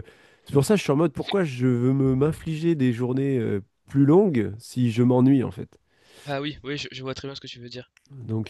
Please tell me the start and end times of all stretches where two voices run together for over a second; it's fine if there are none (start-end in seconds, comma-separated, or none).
none